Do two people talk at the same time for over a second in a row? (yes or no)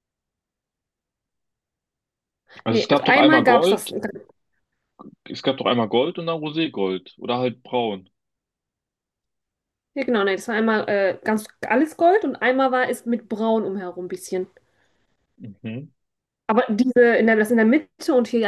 yes